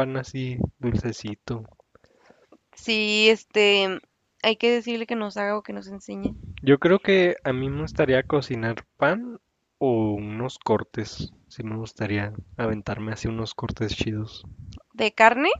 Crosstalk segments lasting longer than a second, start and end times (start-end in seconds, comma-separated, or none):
none